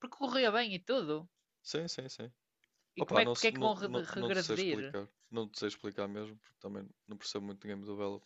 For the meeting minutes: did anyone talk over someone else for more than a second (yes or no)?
yes